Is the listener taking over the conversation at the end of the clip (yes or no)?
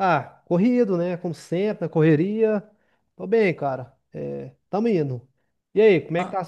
yes